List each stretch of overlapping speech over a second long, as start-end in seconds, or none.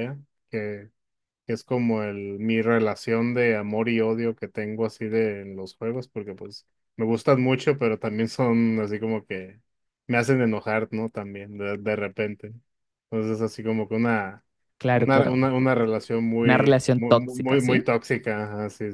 16.4-17.9